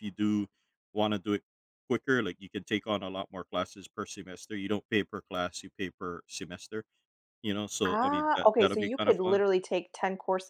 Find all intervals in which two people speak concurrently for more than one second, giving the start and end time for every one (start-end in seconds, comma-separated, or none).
7.9-9.4